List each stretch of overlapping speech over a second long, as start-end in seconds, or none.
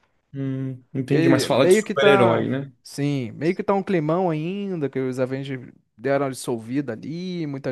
1.1-2.7